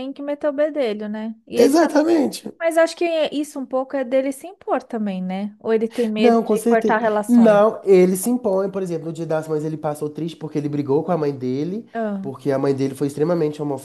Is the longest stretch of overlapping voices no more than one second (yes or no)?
no